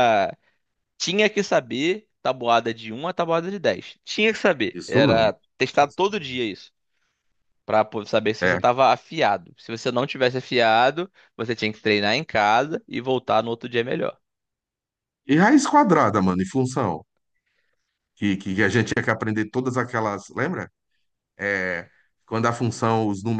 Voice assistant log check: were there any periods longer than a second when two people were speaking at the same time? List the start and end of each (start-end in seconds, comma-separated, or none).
none